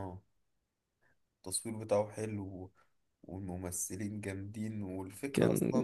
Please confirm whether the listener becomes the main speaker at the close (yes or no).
no